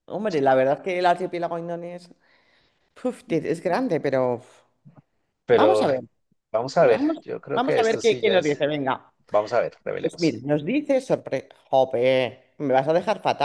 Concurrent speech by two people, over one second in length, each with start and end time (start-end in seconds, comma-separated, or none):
6.8-8.7